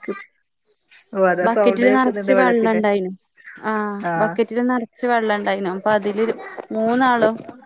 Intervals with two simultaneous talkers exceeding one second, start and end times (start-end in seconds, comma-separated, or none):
1.5-2.8